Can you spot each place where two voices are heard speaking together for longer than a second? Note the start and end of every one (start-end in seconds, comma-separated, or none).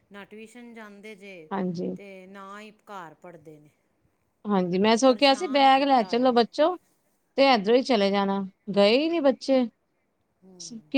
5.0-6.4